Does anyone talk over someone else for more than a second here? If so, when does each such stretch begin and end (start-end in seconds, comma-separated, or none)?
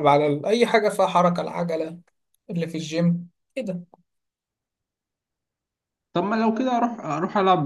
none